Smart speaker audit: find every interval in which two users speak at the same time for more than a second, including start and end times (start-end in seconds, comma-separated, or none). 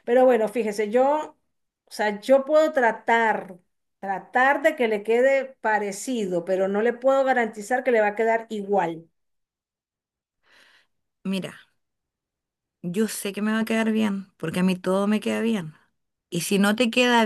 none